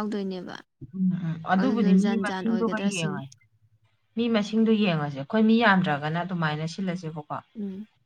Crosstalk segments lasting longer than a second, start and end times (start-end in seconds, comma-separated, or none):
1.6-3.2